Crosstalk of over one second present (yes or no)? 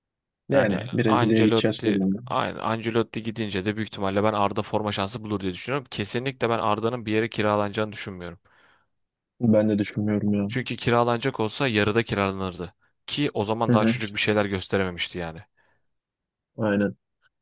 yes